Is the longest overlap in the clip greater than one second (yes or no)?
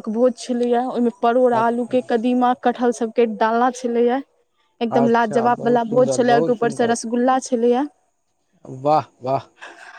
yes